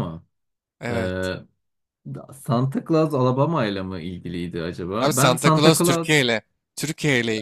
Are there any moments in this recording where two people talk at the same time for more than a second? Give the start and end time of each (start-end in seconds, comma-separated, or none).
5.0-6.2